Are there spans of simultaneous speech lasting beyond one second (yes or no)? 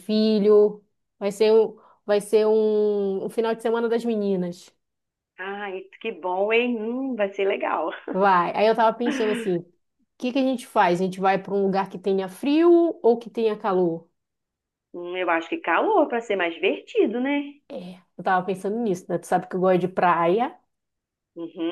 no